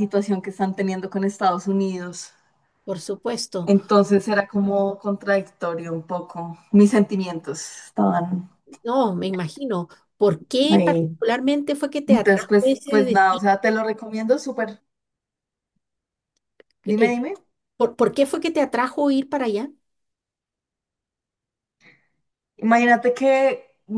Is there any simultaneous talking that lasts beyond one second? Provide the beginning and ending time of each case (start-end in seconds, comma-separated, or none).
12.1-13.4